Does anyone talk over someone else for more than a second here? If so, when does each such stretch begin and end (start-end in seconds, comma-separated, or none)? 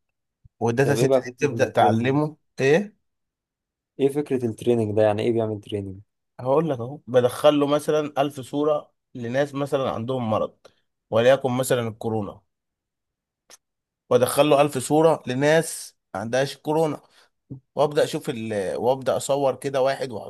0.8-2.1